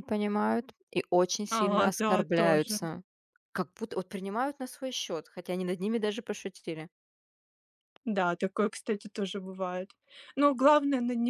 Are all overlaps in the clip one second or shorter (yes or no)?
no